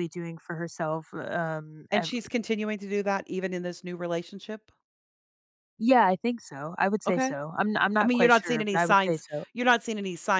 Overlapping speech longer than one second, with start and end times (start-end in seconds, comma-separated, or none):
8.0-9.4